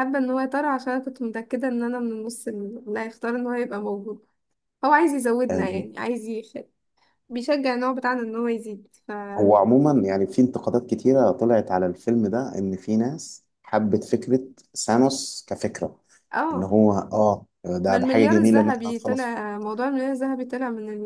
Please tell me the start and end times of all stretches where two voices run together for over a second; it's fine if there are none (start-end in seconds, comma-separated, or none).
17.9-19.3